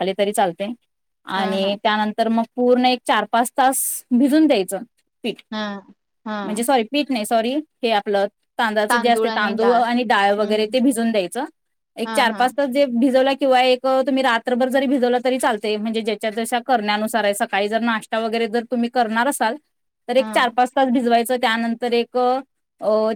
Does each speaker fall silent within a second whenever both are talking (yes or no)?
yes